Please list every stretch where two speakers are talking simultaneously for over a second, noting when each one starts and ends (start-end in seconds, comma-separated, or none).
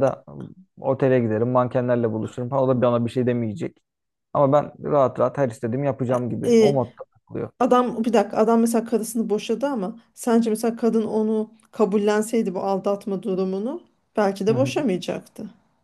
none